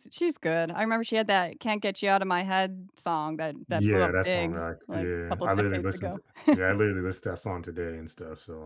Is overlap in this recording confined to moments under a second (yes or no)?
no